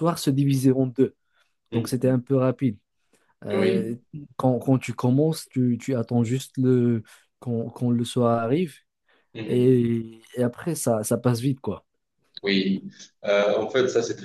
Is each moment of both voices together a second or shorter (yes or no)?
yes